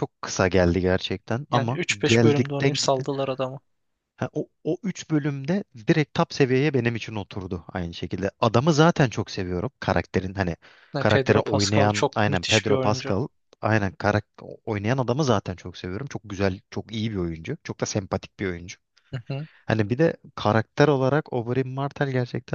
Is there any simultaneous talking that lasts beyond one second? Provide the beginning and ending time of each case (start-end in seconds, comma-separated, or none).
1.5-3.1, 11.0-13.1